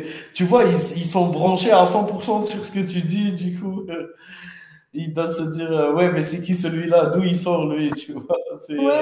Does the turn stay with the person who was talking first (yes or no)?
no